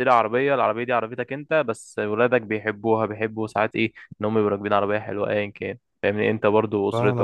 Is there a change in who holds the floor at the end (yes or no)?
no